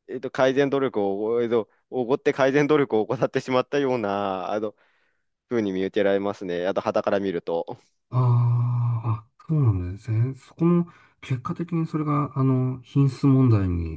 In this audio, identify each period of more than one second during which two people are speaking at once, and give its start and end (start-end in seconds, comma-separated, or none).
none